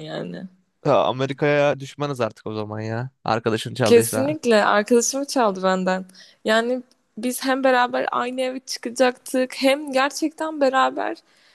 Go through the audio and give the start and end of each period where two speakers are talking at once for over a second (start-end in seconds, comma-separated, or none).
none